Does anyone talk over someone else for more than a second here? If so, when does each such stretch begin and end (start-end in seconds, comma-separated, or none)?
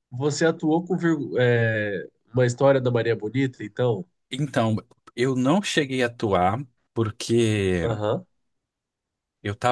none